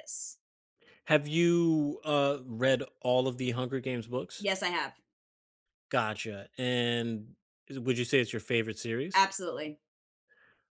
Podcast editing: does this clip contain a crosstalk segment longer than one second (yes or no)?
no